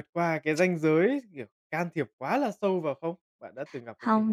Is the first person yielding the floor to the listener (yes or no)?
yes